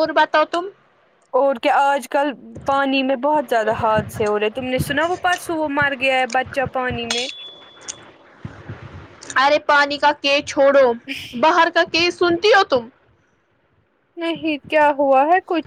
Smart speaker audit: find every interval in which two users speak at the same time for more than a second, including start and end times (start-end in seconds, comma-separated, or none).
none